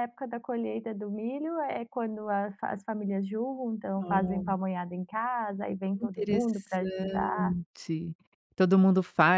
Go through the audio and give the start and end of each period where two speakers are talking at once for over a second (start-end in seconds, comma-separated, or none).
5.9-7.3